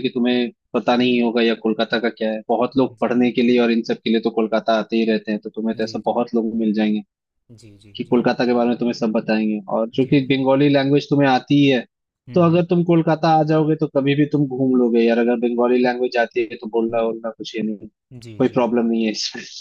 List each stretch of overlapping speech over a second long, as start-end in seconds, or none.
none